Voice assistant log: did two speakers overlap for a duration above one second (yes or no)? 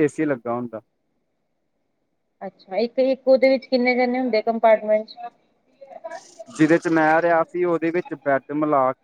no